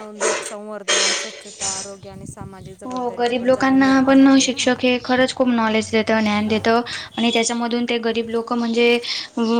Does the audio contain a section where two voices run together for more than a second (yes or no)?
yes